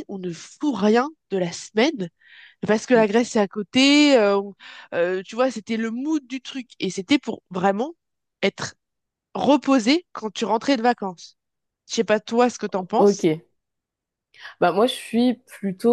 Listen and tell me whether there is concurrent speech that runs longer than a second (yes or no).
no